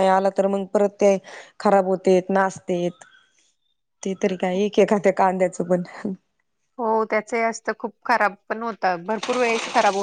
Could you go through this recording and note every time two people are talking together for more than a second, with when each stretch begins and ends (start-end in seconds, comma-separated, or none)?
none